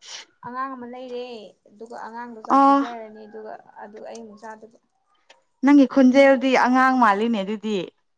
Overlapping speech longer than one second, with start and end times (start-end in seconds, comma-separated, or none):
none